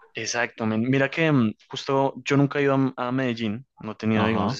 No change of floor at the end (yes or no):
yes